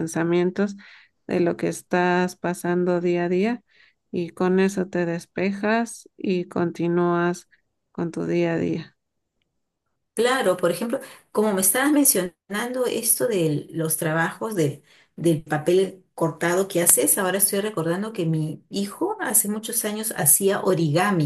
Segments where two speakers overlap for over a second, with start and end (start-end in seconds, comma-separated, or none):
none